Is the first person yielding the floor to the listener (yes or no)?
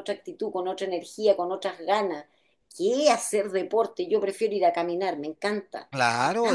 yes